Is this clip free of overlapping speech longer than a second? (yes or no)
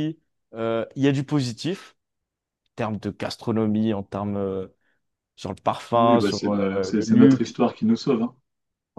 no